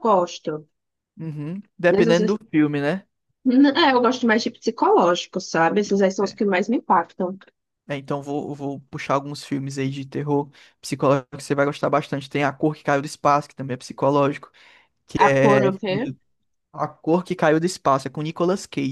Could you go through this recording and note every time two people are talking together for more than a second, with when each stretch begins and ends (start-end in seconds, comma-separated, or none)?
none